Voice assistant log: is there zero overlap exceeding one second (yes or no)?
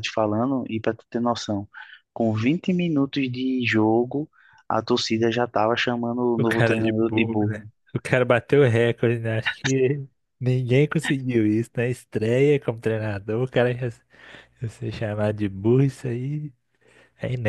no